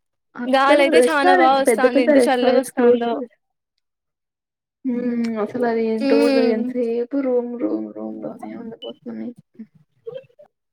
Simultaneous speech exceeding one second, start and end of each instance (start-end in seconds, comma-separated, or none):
0.6-3.1